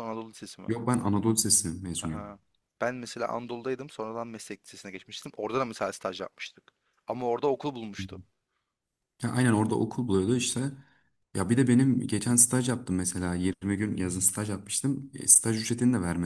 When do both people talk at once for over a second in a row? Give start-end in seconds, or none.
none